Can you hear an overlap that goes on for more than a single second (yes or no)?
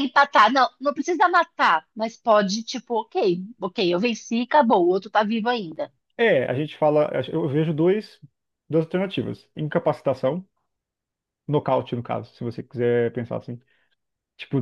no